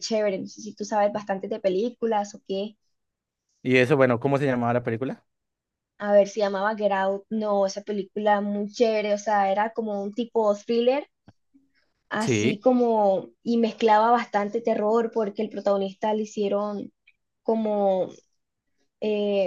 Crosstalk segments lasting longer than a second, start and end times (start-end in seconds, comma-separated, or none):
none